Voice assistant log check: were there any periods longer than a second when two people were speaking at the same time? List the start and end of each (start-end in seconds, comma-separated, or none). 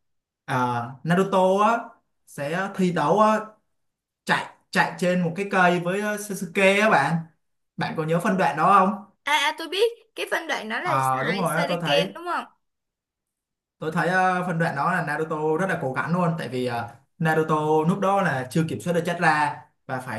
10.8-12.1